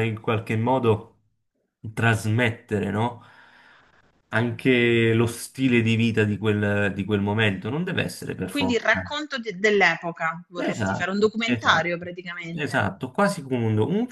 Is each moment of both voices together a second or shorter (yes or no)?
no